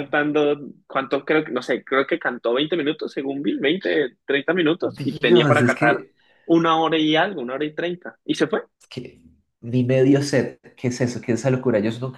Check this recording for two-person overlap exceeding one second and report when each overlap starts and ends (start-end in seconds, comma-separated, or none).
4.8-6.0